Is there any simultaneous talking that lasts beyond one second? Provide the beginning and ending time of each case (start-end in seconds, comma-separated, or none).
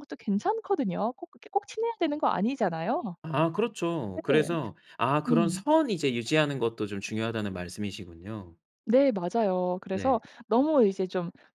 none